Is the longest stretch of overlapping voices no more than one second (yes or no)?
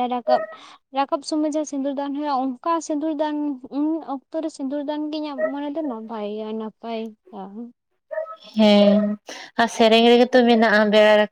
yes